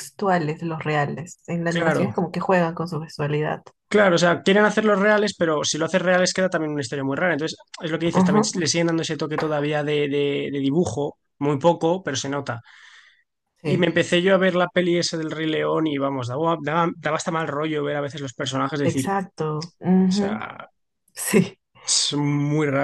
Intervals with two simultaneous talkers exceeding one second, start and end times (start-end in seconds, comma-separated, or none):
none